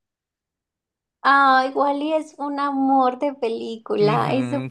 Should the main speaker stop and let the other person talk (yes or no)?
yes